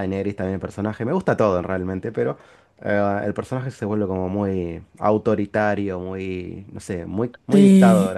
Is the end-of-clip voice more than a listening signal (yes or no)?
yes